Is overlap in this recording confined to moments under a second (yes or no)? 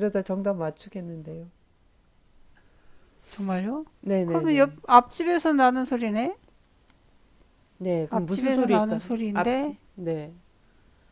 no